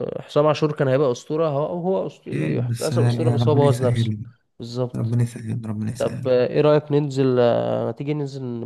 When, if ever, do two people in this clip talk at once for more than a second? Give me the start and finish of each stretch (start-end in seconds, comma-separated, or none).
2.3-4.1